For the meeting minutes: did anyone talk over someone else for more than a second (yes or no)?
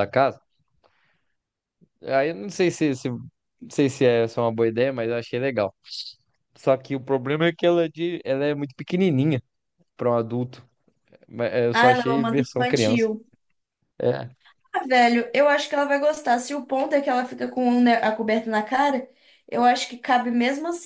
yes